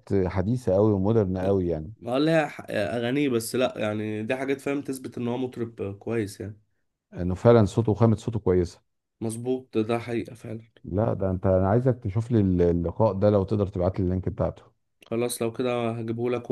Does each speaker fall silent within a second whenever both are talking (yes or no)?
yes